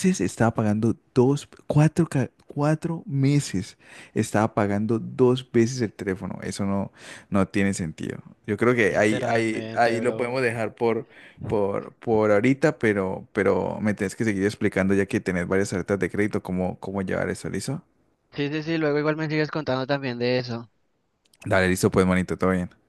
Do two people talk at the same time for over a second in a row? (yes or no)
yes